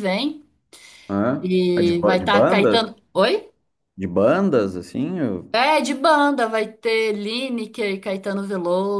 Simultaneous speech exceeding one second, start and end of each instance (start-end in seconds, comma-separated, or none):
1.4-3.0